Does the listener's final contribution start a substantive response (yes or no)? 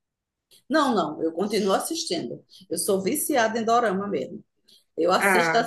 no